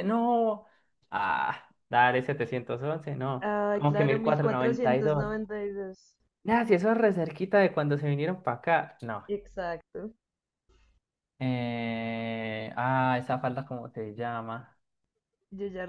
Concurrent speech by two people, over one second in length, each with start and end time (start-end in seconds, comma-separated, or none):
3.4-5.2